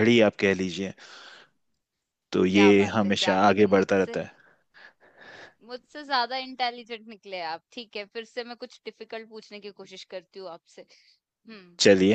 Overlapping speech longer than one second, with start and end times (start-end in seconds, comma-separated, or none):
2.5-4.2